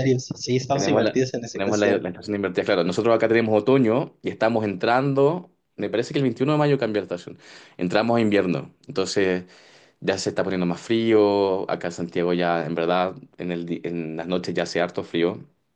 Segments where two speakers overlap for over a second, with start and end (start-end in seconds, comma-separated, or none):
0.7-2.0